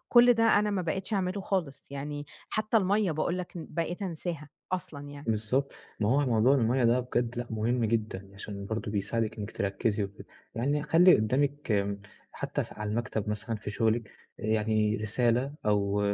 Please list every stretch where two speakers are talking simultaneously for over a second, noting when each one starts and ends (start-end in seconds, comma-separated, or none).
none